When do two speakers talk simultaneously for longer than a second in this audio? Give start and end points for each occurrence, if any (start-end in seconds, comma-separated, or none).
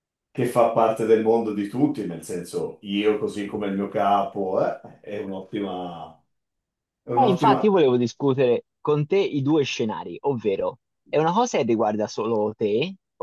none